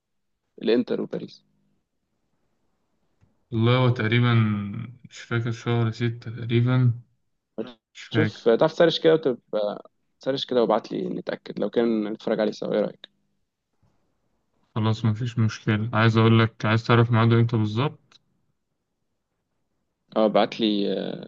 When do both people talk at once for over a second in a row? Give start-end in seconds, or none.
none